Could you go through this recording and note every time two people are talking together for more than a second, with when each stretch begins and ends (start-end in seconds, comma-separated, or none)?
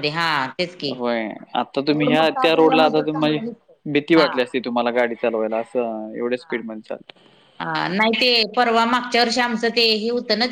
1.9-3.4